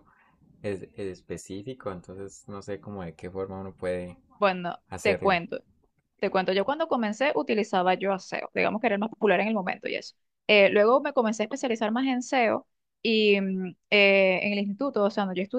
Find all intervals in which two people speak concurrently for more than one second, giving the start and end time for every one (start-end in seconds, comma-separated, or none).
none